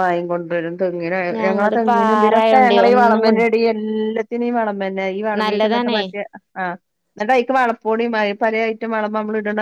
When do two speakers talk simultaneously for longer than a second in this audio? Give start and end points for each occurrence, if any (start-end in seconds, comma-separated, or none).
1.4-3.3